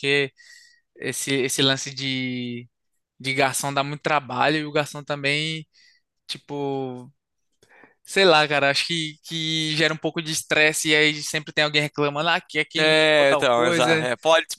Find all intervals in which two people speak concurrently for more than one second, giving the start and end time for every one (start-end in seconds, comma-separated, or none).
12.8-14.1